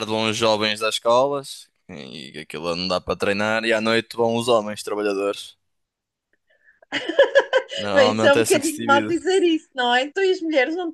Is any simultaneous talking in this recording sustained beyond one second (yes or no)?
yes